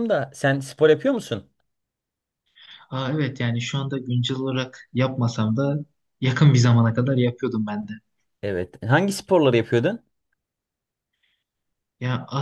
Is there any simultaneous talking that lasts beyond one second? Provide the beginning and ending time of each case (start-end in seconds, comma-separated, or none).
none